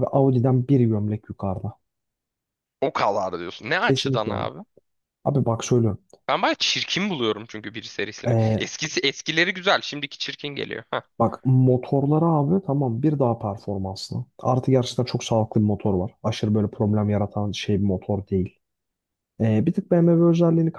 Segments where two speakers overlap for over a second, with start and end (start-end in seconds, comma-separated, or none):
none